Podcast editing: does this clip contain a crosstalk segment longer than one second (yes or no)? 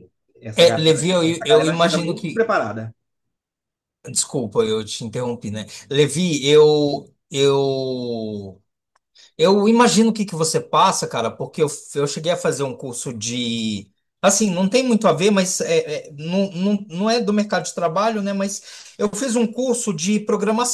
yes